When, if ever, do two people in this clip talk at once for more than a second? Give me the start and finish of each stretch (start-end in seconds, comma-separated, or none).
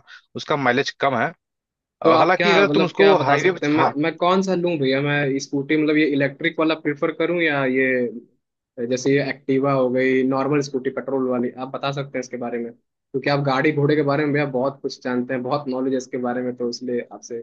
2.0-3.5